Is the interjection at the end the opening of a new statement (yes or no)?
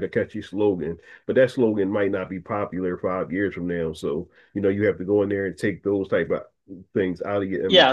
yes